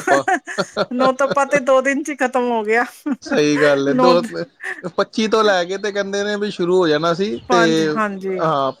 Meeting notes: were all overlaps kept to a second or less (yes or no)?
yes